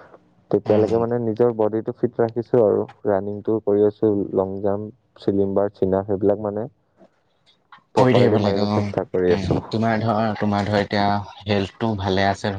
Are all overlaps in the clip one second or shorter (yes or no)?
no